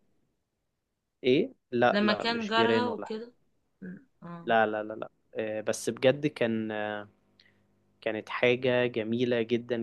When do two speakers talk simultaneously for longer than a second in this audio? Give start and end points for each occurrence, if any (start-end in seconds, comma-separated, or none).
1.9-3.1